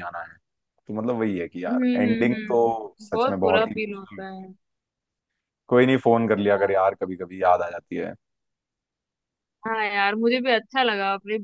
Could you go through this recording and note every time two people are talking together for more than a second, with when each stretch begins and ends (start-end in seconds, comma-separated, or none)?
1.7-4.2